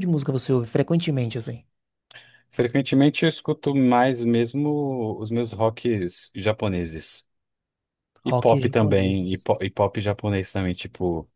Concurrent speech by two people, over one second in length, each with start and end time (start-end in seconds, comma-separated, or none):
8.2-9.5